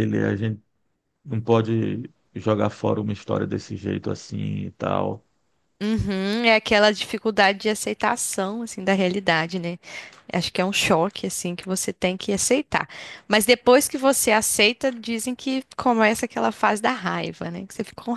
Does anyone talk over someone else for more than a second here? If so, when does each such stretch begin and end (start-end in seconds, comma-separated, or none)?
none